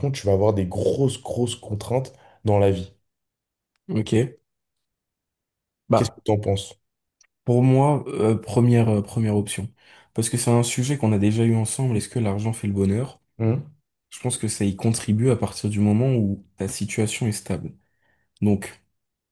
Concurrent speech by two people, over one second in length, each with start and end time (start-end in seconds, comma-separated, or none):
none